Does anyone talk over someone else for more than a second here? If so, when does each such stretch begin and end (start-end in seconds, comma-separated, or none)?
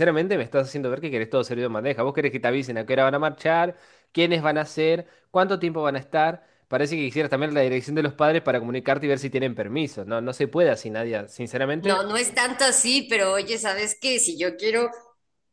none